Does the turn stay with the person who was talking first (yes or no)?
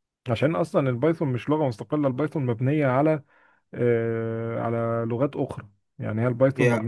yes